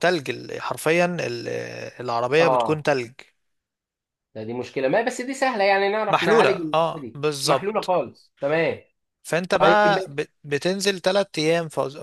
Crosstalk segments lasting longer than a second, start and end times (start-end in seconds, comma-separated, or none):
6.1-7.9